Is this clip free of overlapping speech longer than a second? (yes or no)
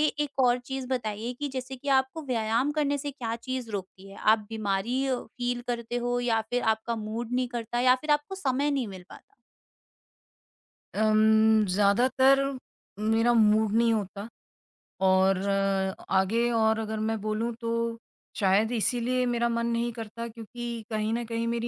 yes